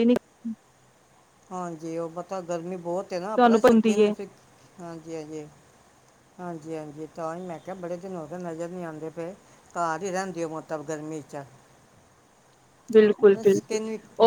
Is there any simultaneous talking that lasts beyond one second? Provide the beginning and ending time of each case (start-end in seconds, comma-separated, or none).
none